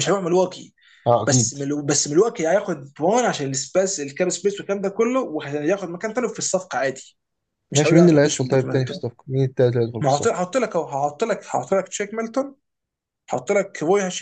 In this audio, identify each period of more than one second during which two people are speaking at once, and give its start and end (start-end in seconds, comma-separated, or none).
7.8-9.0